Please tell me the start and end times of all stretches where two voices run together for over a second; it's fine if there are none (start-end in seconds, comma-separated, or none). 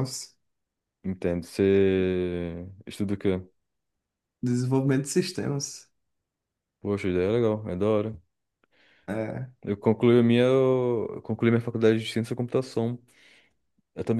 none